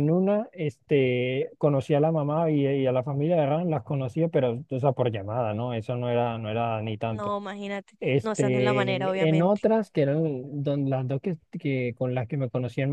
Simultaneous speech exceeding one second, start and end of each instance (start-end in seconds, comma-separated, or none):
8.0-9.6